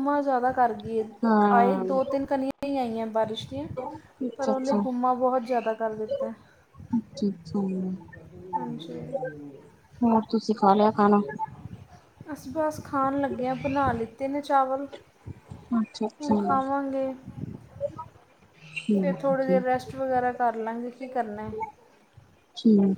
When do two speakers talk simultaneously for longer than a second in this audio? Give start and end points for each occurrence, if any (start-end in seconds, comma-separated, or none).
none